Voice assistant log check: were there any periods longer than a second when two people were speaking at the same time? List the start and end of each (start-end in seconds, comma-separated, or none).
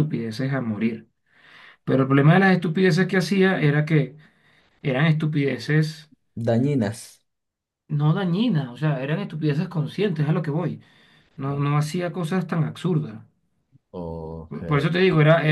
none